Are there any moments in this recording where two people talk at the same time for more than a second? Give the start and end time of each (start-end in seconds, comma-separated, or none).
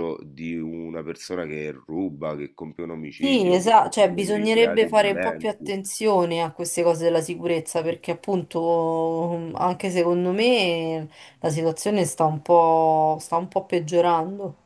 3.1-5.7